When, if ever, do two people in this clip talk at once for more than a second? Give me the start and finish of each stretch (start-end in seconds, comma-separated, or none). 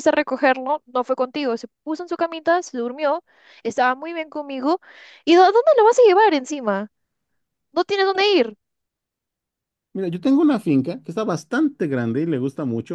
none